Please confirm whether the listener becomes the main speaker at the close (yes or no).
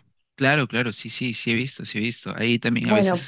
no